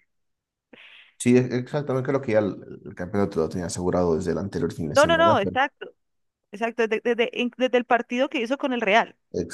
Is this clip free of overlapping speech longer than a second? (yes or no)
yes